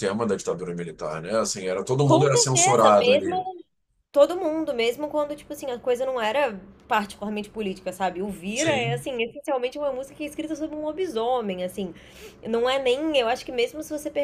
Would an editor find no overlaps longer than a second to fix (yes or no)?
no